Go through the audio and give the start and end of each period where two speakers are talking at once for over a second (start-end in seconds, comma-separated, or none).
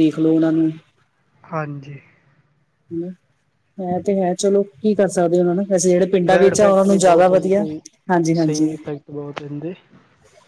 6.3-7.6